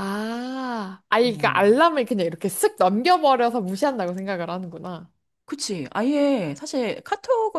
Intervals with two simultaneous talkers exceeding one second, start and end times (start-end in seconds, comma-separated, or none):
none